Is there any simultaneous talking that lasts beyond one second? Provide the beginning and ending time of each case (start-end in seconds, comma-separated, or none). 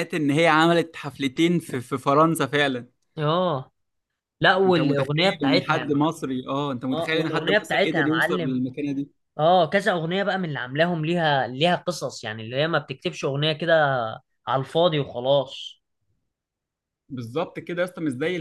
4.7-6.0, 6.9-8.6